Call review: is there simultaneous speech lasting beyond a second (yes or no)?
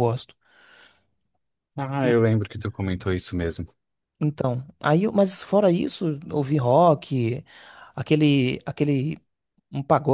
no